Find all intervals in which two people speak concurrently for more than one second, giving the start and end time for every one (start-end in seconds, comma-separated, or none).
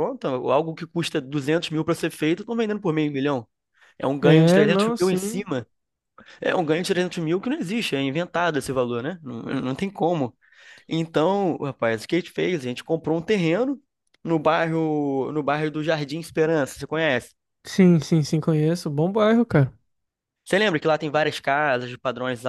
4.2-5.5